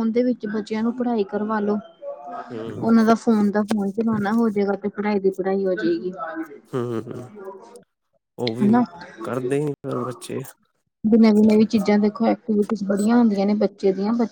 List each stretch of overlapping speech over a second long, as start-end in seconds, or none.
none